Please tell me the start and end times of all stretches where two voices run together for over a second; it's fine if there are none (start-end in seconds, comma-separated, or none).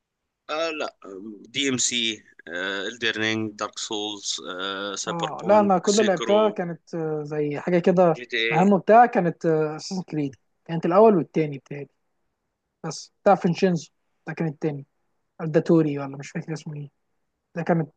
5.1-6.6